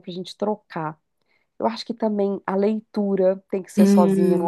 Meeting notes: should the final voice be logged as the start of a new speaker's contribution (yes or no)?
yes